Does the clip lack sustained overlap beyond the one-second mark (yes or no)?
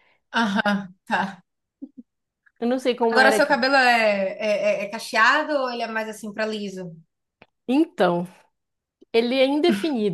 yes